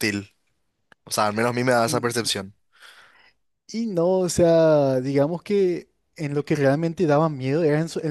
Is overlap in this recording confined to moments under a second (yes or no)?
yes